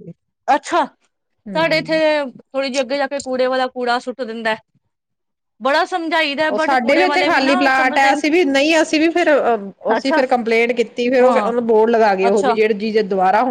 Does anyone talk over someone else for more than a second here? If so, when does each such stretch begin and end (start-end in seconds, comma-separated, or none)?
6.5-8.2